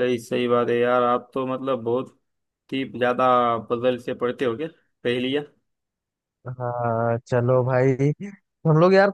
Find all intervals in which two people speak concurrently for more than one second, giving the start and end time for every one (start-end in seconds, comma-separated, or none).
none